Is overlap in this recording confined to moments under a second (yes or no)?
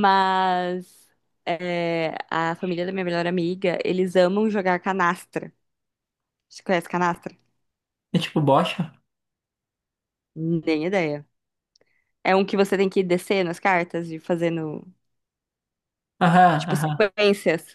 yes